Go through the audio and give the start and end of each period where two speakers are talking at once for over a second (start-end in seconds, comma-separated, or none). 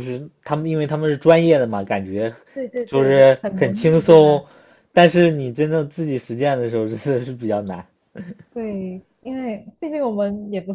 2.9-4.5